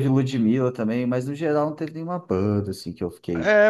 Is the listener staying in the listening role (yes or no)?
no